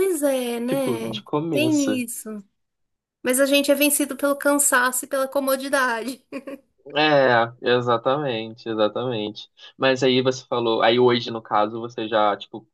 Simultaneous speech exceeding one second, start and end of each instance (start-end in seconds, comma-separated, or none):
0.6-2.0